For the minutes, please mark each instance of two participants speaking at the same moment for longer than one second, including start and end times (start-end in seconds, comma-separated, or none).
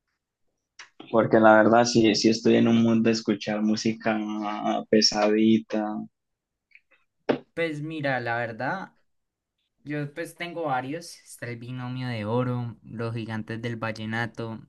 none